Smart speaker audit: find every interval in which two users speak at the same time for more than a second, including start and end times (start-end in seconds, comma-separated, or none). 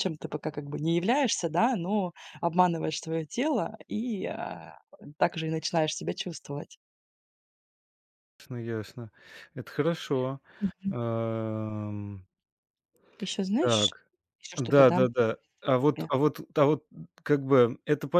none